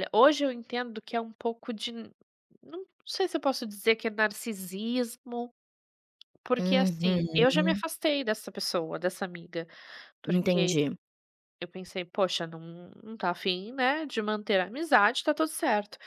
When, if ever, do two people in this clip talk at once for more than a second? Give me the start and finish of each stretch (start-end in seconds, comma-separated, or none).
6.6-7.8